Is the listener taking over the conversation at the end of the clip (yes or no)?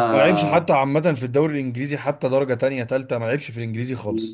yes